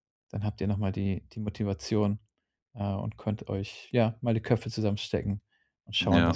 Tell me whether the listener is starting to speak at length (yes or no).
no